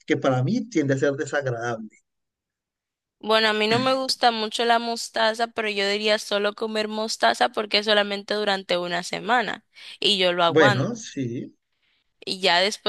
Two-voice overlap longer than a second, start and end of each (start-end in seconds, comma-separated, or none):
none